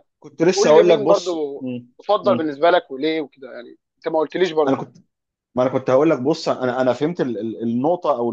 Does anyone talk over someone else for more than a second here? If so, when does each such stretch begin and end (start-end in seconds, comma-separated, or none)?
0.5-2.5